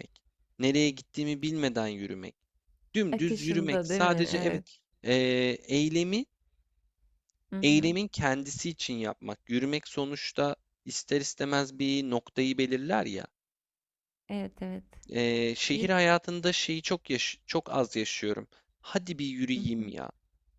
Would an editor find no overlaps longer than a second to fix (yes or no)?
no